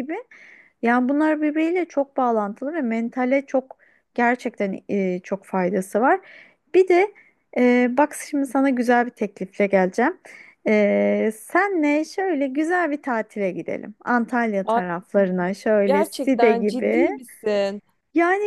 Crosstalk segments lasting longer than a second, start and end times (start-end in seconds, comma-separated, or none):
15.8-17.1